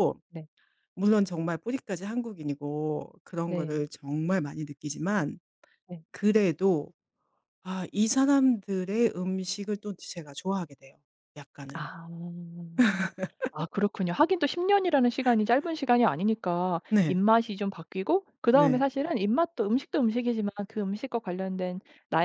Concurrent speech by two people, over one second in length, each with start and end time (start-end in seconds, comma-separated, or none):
none